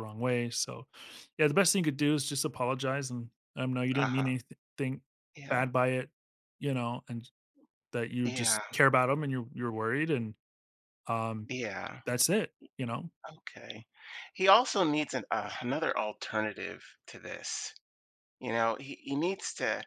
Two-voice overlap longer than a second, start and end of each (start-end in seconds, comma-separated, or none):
none